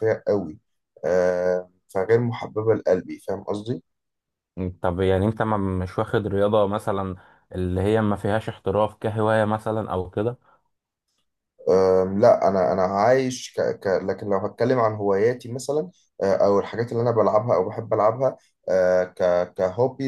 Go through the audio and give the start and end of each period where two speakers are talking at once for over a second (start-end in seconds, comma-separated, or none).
none